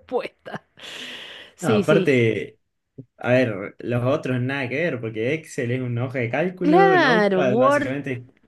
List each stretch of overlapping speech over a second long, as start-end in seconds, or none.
6.6-7.9